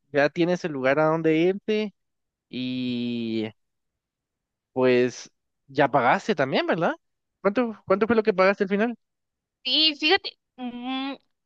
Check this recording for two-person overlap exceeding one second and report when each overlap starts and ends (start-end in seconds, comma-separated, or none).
none